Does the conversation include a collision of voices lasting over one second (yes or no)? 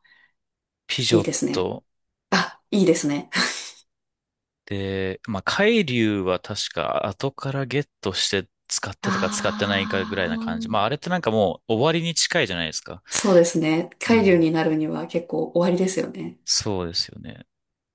yes